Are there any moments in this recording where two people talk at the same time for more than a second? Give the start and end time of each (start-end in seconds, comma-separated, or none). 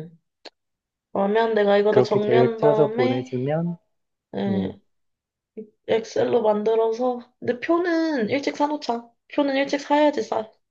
1.9-3.3